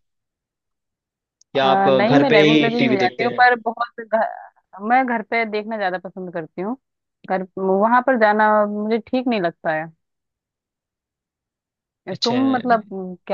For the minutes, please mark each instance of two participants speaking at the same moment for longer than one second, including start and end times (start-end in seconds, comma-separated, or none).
1.6-3.4